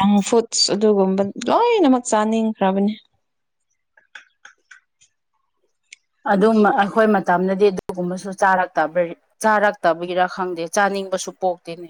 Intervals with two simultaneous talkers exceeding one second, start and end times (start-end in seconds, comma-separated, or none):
none